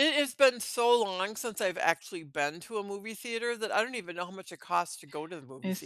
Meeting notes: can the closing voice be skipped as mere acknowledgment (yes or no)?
no